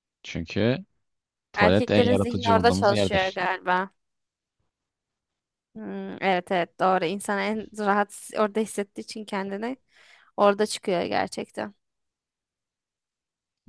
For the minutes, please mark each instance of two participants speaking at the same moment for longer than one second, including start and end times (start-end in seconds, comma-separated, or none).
1.6-3.4